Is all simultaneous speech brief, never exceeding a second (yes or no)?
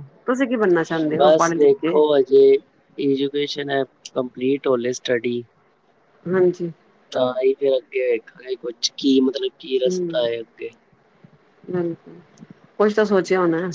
yes